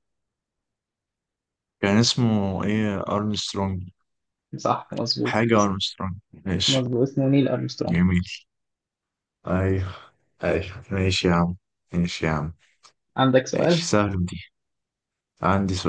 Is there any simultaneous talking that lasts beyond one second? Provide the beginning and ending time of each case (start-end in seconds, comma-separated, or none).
none